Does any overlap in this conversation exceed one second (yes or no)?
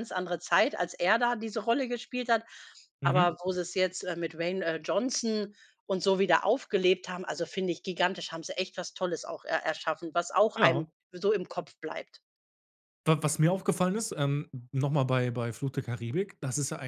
no